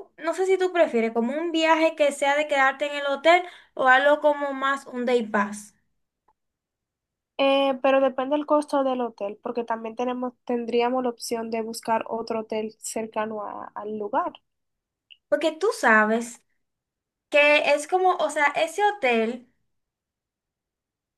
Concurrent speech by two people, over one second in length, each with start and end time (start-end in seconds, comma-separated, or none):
none